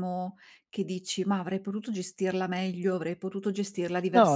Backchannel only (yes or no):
no